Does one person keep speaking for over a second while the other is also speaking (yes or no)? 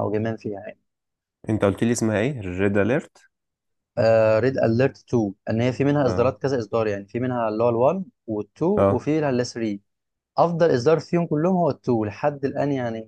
no